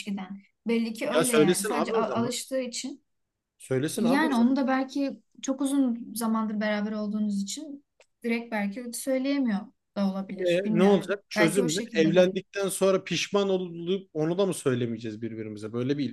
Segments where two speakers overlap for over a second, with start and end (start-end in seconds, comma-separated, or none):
1.1-2.4, 10.5-12.4